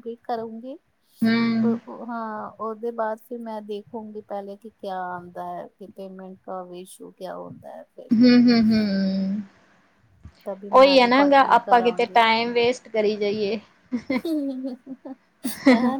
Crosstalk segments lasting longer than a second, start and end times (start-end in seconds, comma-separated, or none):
none